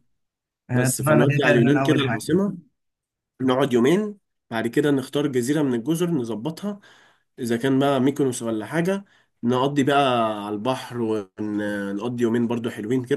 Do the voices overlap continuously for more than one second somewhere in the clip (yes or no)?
yes